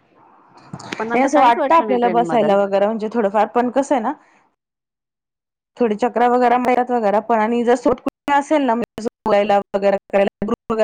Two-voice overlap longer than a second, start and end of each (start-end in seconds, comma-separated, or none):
1.0-2.5